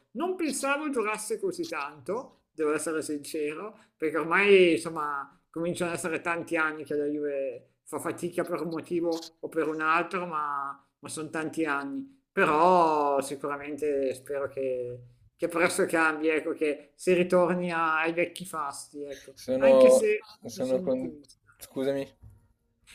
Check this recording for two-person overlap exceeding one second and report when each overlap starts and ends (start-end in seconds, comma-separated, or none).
19.3-21.1